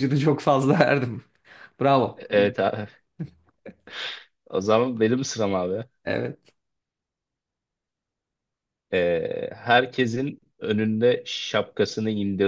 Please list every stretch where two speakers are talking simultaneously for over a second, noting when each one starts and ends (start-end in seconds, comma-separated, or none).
none